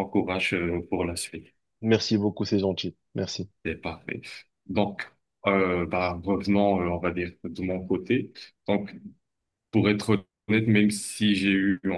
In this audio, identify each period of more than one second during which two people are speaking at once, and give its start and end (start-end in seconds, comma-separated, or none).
none